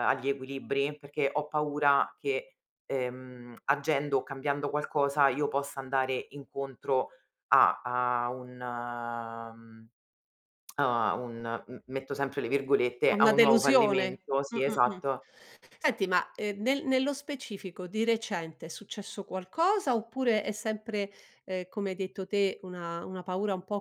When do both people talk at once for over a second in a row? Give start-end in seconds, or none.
13.1-15.0